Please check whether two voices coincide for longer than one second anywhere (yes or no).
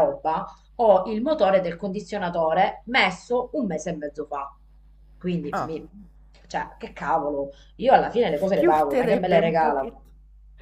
yes